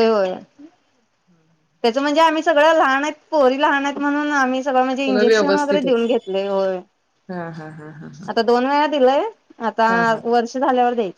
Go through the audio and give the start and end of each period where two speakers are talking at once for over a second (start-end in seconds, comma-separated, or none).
4.9-6.1